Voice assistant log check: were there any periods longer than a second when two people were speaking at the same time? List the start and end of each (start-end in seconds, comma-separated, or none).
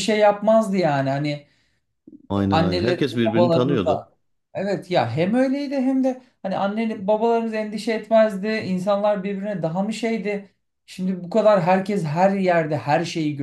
2.5-4.1